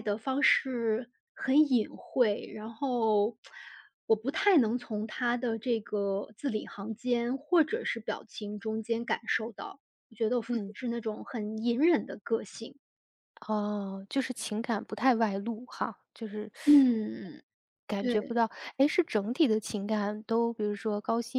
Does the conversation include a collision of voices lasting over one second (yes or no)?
no